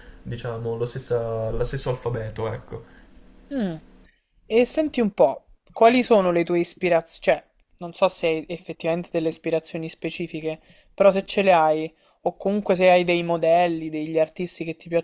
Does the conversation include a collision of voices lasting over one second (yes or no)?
no